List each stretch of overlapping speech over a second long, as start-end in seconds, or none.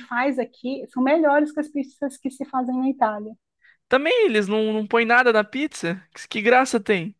none